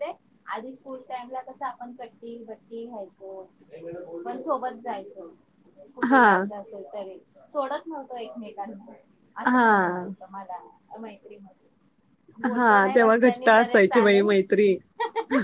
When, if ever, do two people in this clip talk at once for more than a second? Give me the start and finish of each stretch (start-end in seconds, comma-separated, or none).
12.4-14.3